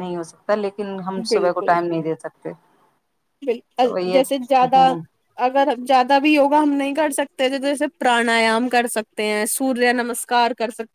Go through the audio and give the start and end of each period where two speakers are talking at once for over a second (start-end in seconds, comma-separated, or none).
none